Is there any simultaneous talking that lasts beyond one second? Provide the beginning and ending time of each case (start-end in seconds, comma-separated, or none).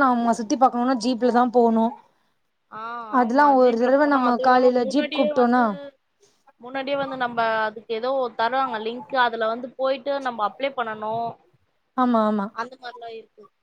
3.2-5.6